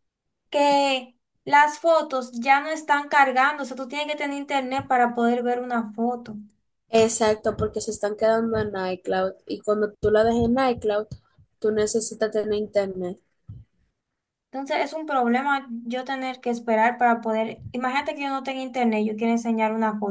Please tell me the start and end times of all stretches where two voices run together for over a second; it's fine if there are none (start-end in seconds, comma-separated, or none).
none